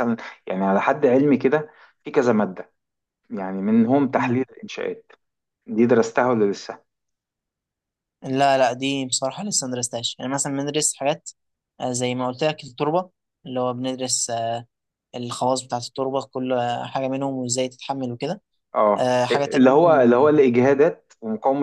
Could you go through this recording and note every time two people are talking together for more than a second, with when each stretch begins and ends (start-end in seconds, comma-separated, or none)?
19.0-20.4